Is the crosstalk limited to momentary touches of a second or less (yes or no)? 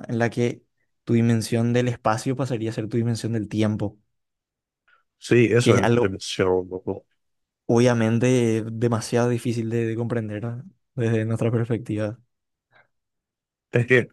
yes